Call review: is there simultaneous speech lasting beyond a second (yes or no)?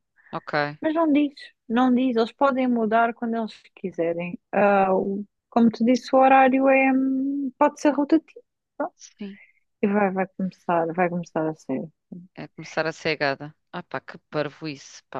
no